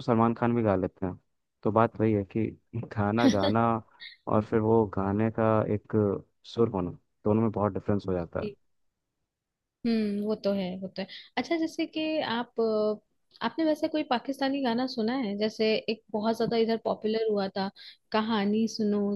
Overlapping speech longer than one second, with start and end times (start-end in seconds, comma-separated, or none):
none